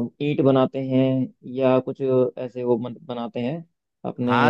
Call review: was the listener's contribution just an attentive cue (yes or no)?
no